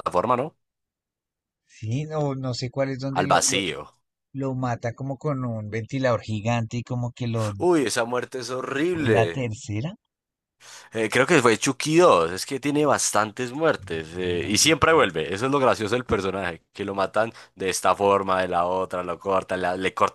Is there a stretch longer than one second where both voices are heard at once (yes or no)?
no